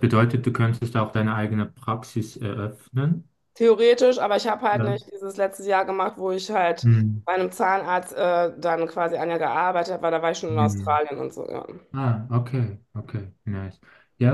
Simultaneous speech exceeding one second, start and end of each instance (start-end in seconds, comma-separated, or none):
none